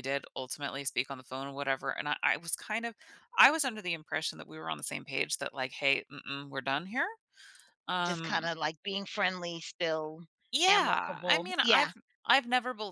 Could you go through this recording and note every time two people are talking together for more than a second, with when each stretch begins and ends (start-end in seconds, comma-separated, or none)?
10.7-11.9